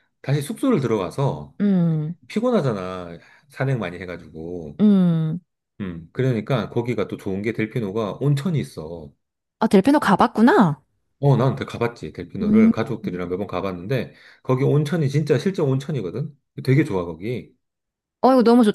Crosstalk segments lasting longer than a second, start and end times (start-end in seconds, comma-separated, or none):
none